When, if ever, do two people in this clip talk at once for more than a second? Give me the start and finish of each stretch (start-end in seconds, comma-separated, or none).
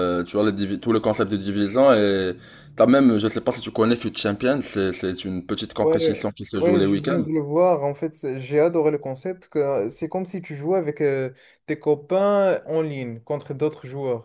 5.8-7.2